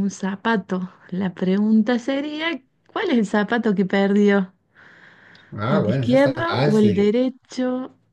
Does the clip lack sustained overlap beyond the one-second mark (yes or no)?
no